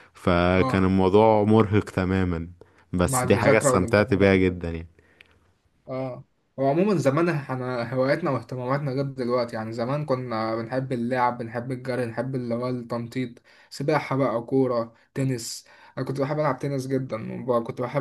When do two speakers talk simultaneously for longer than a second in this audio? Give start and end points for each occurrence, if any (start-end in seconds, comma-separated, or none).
3.0-4.6